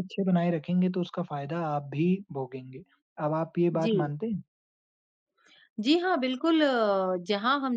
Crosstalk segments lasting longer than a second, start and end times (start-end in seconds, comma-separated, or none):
none